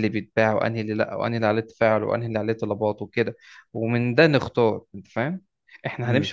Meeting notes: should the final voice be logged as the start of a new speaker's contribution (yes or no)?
no